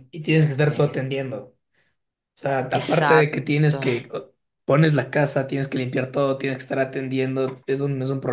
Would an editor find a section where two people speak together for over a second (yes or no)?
yes